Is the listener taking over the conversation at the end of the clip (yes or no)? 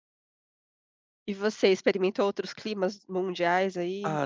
yes